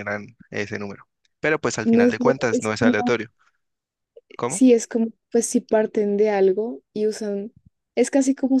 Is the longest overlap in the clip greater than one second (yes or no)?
yes